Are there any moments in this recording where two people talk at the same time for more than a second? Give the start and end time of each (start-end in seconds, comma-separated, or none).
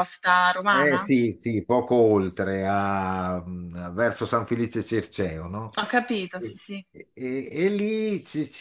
none